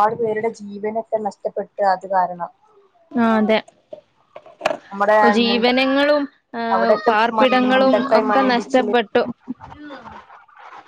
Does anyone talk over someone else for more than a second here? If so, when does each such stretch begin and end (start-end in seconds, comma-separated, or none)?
6.8-8.9